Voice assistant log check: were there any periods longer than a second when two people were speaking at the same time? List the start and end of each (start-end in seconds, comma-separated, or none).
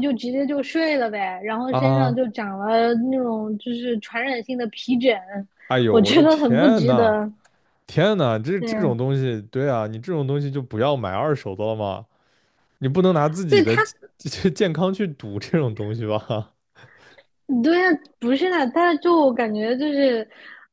5.9-7.2